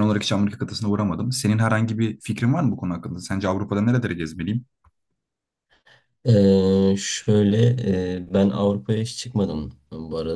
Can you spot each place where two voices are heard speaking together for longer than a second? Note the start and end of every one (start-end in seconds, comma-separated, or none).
none